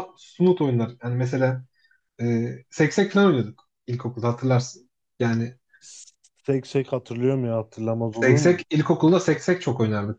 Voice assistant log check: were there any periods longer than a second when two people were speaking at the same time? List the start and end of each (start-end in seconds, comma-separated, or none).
none